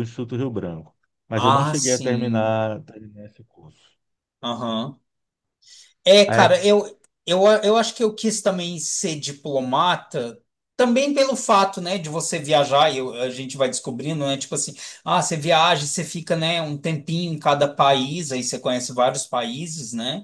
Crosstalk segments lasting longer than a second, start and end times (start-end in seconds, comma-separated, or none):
1.4-2.6